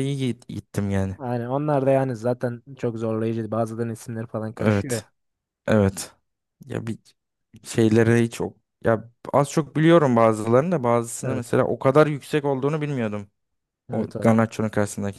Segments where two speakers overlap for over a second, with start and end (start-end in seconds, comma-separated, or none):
none